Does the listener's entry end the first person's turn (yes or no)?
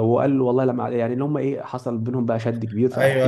yes